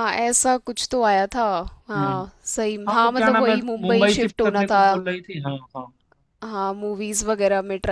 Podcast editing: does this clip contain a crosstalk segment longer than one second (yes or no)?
yes